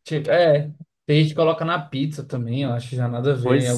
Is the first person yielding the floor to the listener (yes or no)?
yes